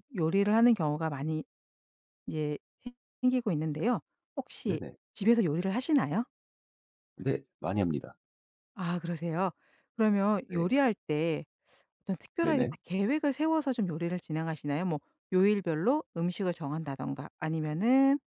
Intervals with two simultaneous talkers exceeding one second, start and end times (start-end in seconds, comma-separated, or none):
none